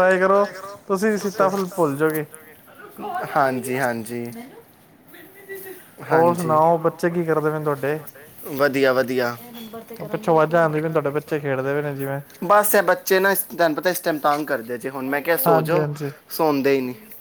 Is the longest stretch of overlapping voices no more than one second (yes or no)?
yes